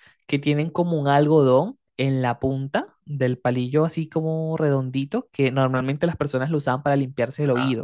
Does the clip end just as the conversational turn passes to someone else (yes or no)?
yes